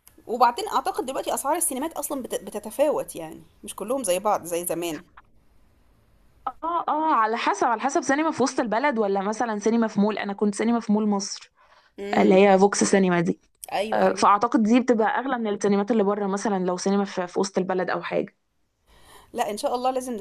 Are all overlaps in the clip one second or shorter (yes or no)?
yes